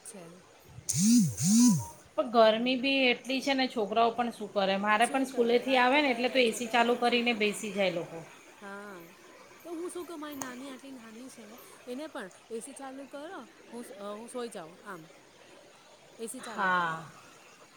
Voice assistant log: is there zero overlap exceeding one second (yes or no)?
no